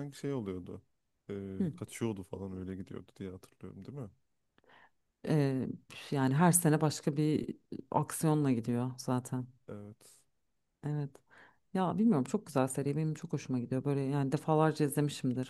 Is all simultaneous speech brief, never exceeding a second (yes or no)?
yes